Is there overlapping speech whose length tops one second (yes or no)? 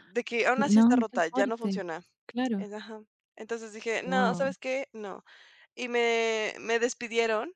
yes